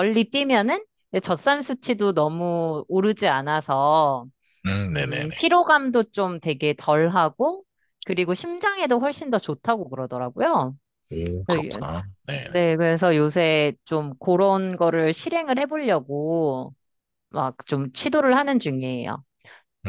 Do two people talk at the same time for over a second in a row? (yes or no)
no